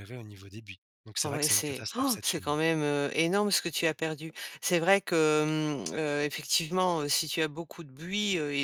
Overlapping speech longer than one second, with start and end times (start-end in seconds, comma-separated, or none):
1.2-2.6